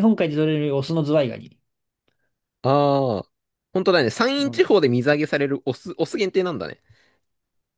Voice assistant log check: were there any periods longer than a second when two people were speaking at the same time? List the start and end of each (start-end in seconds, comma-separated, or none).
none